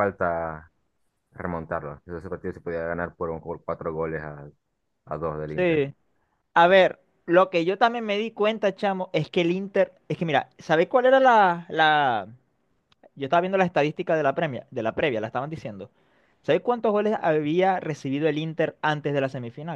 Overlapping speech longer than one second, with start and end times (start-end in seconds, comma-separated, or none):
none